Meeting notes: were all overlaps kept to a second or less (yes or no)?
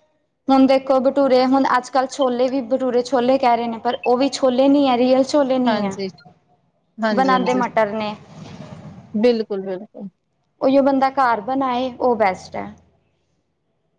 yes